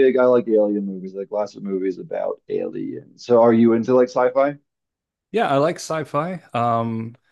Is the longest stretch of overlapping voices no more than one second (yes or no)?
yes